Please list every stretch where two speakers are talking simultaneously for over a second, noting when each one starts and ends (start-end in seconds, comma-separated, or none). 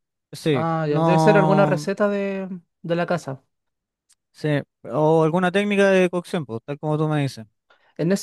0.5-1.9